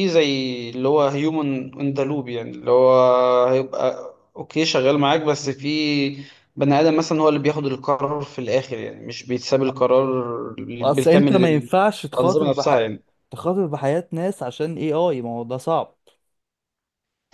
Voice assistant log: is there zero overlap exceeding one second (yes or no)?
yes